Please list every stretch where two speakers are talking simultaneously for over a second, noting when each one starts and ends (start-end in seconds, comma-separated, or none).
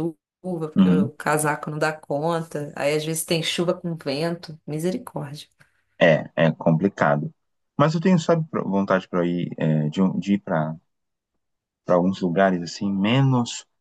none